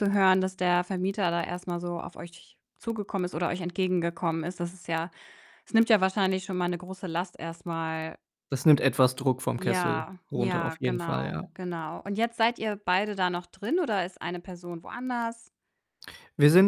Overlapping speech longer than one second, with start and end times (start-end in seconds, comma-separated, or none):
9.6-11.4